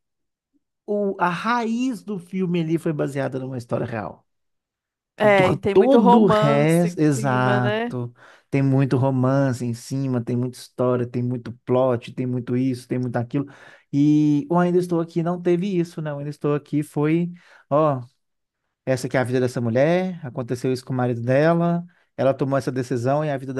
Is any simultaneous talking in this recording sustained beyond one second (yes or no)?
yes